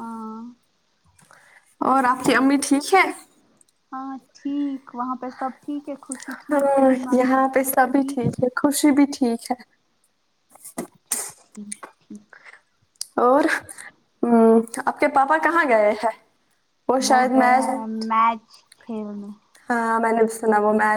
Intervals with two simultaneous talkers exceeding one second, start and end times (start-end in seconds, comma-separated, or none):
6.5-8.2